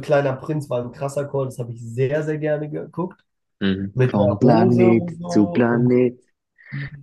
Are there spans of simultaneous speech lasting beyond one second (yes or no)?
yes